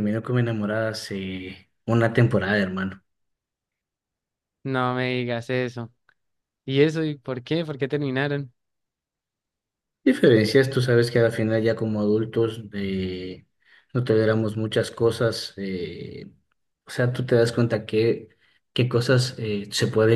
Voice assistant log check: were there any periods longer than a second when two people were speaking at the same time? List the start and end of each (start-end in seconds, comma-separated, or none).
none